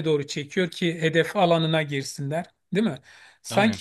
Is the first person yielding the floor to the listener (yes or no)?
no